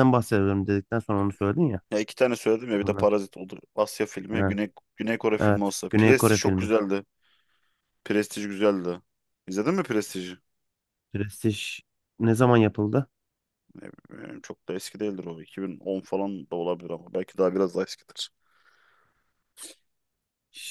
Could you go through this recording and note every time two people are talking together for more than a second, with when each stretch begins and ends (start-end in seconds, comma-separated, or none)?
5.4-6.7